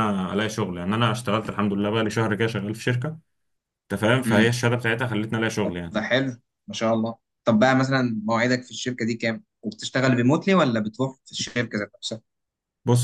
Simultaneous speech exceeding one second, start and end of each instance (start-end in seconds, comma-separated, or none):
none